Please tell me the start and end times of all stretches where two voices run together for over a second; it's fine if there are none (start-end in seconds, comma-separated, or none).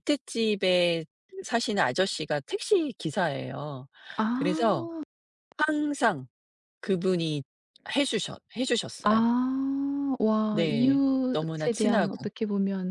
10.5-12.3